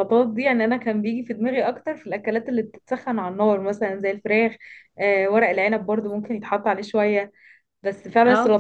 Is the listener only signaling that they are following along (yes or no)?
yes